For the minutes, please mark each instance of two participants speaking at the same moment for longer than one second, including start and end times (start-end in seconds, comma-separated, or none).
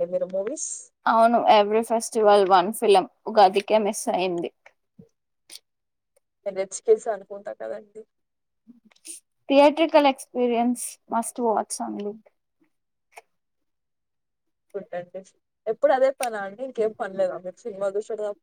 none